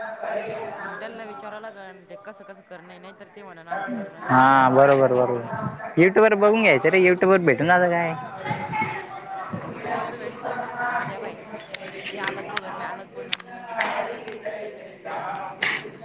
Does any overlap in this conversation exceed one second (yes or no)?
yes